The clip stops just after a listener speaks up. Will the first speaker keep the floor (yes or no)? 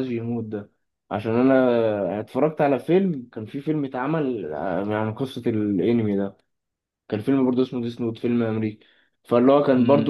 yes